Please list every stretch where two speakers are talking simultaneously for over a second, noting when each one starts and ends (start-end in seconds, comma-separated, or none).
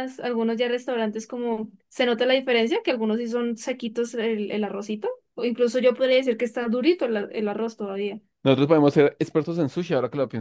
none